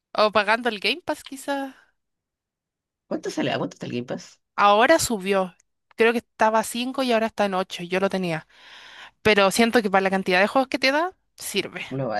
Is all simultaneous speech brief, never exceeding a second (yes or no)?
yes